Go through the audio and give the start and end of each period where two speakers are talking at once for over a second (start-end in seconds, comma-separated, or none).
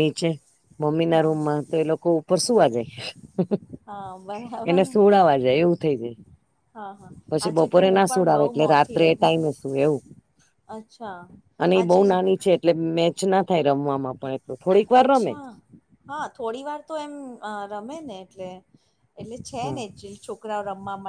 7.5-9.3